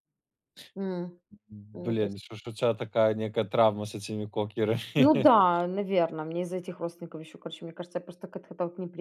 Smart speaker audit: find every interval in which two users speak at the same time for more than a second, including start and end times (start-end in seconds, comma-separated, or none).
none